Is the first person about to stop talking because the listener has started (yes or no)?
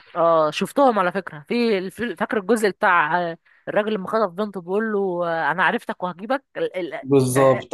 yes